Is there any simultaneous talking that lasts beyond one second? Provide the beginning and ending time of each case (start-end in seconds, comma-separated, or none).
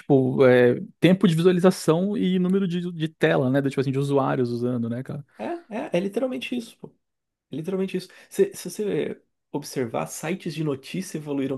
none